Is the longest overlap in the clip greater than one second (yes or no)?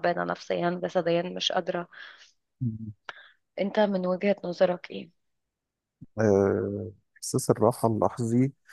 no